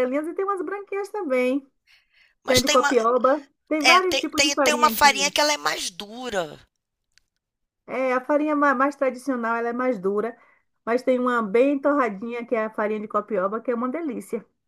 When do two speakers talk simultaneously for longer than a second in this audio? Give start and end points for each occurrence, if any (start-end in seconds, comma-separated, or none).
3.8-5.3